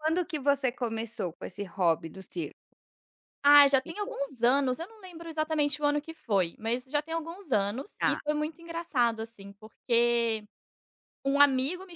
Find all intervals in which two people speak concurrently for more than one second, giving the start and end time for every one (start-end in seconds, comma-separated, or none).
none